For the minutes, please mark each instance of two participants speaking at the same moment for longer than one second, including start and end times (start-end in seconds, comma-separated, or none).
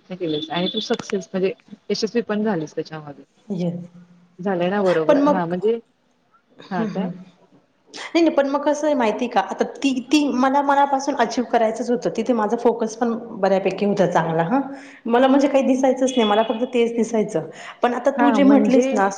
none